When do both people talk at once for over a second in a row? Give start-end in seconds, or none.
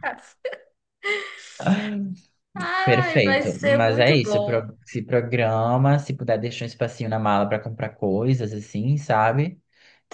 2.8-4.7